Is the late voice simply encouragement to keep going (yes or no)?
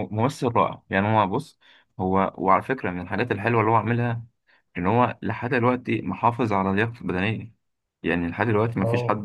yes